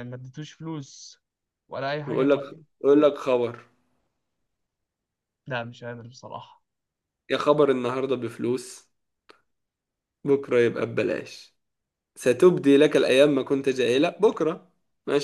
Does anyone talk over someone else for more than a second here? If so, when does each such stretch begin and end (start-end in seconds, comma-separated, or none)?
none